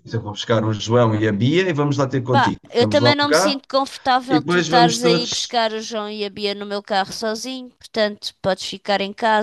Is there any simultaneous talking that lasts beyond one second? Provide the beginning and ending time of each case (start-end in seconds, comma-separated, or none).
2.3-3.6, 4.3-5.6